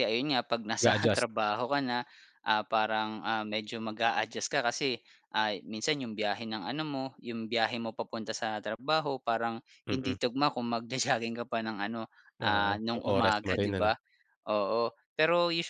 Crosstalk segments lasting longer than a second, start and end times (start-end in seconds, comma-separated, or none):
12.4-13.9